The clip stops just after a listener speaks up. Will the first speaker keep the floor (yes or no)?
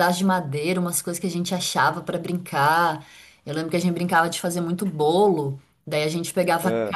yes